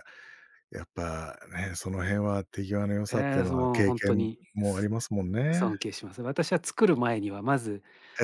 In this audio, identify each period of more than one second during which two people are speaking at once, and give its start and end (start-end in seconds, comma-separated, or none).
3.1-4.9